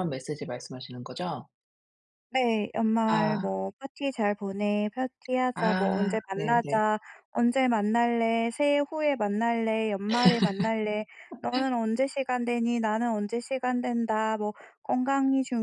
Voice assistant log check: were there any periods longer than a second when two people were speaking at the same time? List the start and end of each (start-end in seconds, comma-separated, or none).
5.5-6.8